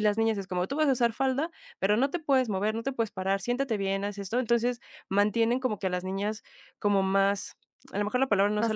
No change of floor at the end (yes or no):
yes